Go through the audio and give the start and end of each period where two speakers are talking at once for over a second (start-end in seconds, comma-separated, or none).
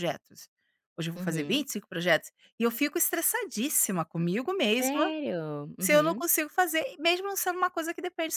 none